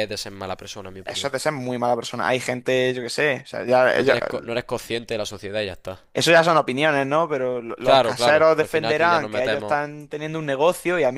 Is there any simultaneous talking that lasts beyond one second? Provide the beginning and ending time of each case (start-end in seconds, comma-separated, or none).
7.8-9.8